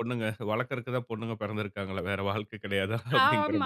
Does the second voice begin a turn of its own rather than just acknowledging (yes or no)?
yes